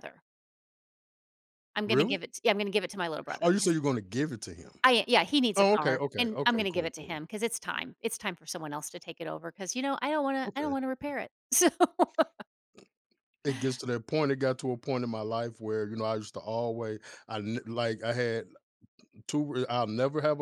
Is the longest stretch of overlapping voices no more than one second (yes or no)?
no